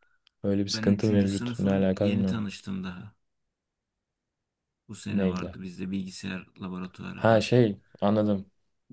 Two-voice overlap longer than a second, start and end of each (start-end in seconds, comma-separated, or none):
0.7-2.5